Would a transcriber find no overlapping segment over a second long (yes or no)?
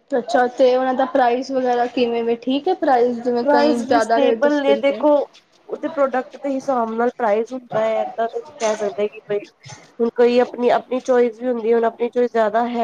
no